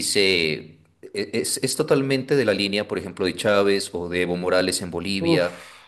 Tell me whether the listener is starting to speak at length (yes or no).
no